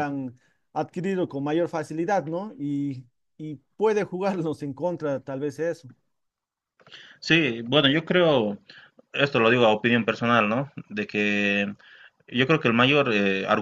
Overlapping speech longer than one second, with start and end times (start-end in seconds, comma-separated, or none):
none